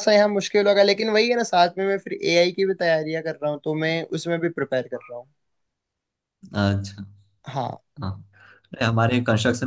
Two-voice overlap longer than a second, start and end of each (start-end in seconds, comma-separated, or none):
none